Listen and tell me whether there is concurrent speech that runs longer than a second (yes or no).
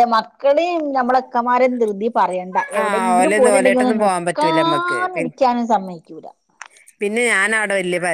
yes